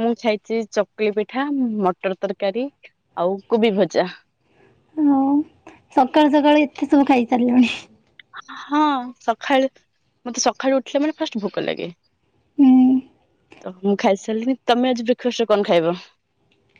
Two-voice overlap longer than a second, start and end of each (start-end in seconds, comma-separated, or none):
none